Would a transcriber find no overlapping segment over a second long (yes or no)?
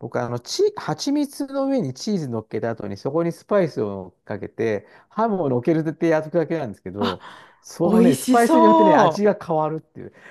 no